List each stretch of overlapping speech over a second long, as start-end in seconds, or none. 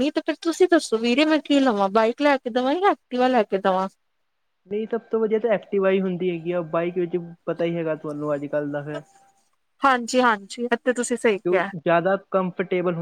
none